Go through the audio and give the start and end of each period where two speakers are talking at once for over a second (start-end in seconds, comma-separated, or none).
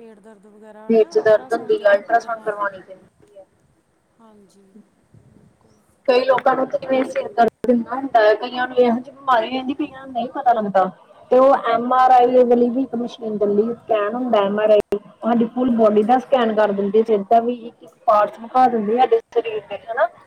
0.9-2.8